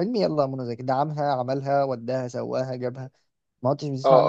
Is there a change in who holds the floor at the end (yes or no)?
yes